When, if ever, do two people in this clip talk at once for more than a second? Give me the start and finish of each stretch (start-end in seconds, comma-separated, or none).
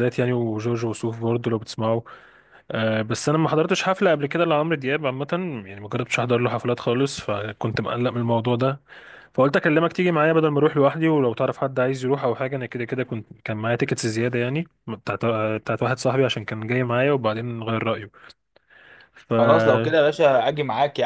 none